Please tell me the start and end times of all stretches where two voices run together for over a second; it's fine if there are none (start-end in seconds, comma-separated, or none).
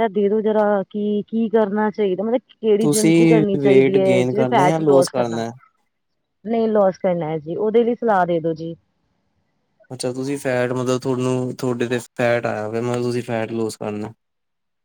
2.8-4.8